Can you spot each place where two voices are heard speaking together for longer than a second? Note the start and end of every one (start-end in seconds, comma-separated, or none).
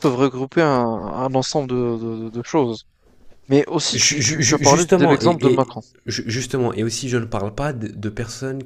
3.9-5.8